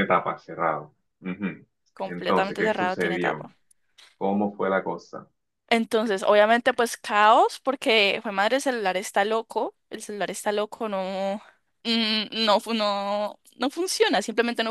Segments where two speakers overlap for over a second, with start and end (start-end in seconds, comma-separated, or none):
2.0-3.5